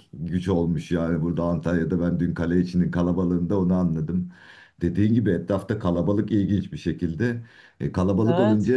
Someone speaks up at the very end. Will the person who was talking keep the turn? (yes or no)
yes